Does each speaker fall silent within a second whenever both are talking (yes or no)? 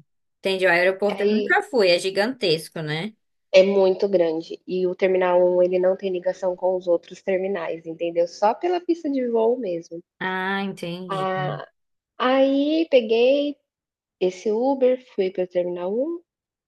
yes